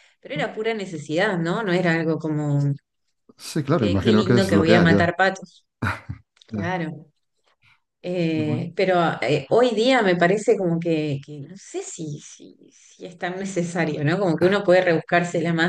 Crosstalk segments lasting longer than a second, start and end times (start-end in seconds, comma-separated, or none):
3.8-5.1